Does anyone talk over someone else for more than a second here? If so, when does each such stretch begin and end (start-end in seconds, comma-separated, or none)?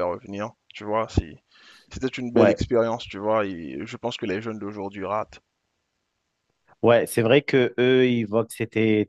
none